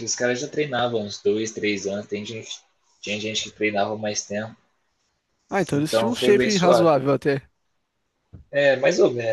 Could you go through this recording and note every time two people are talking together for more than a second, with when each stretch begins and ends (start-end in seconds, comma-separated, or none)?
5.8-7.0